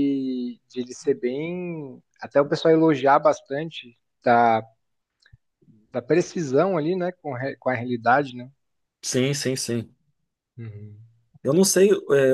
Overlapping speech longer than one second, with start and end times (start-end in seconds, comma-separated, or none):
none